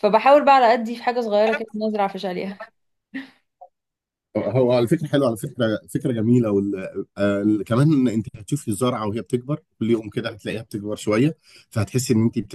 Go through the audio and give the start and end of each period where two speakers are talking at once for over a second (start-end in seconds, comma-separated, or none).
none